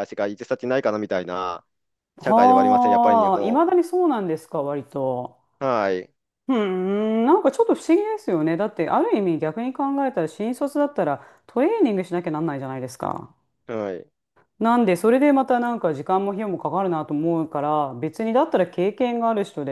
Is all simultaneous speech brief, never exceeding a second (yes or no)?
no